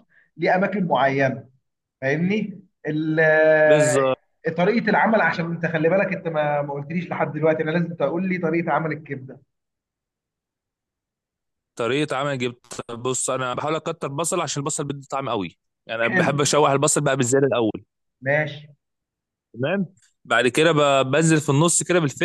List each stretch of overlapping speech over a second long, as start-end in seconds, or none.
none